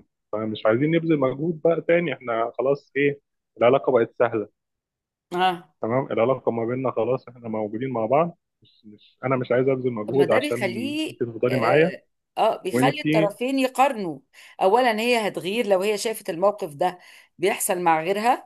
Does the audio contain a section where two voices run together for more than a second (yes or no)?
yes